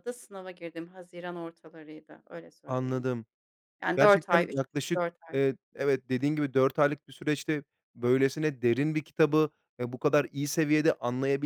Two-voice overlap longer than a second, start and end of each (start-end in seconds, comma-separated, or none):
4.0-5.4